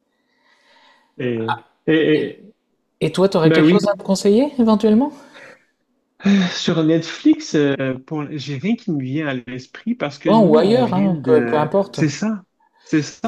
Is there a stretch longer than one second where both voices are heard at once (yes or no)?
yes